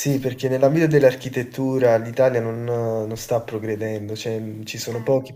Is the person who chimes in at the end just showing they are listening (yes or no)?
yes